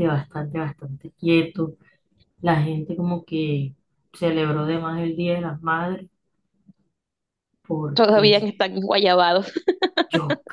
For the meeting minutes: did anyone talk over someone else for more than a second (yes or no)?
no